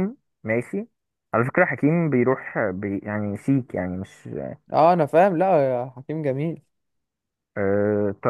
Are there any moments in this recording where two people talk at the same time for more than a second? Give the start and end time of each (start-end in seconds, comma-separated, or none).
none